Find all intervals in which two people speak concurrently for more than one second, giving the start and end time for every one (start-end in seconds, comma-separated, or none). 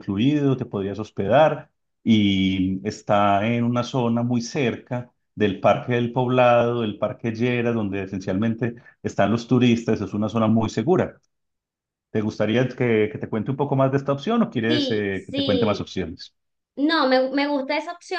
14.7-15.9